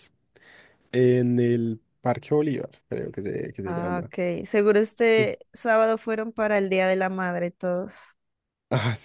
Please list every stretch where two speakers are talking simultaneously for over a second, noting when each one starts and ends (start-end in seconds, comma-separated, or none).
none